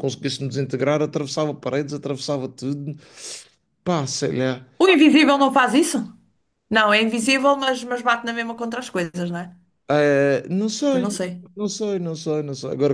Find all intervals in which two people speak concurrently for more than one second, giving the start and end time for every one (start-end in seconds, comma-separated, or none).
none